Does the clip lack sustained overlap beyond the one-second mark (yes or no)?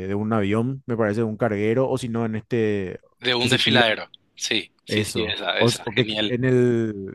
no